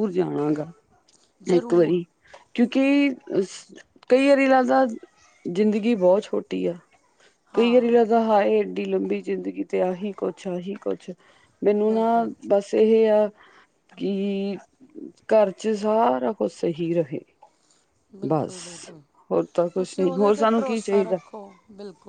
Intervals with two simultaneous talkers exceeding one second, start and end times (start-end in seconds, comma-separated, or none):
19.8-21.2